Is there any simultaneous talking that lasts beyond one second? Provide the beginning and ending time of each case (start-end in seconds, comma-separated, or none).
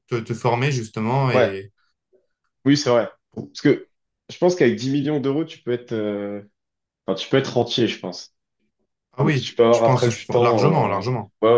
9.2-11.0